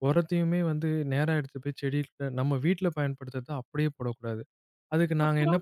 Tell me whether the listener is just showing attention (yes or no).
yes